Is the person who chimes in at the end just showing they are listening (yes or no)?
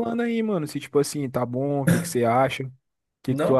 no